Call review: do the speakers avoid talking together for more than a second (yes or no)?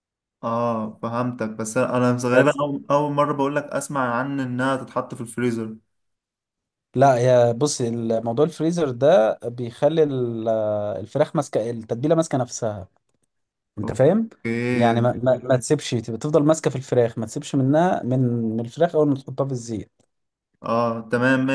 yes